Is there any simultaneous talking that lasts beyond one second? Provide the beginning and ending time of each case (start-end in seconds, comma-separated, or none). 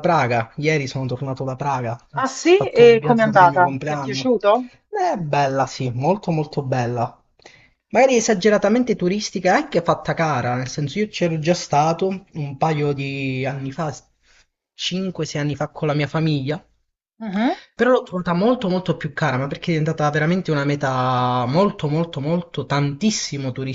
2.1-4.4